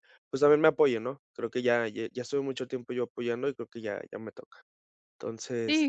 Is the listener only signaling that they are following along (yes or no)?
no